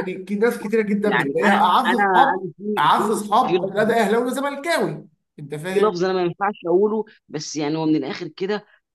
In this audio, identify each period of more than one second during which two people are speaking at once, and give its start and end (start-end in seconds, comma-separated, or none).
1.0-3.6